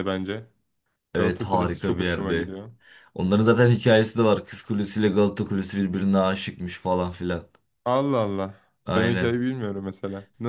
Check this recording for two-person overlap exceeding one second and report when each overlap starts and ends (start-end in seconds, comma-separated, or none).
1.1-2.5